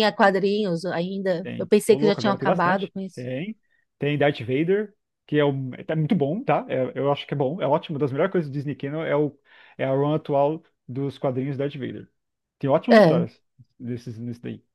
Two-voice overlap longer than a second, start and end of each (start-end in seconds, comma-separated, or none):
1.4-3.2